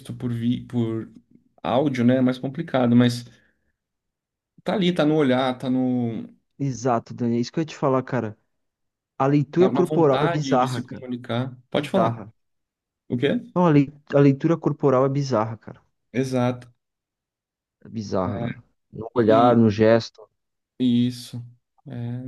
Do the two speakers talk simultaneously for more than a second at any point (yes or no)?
yes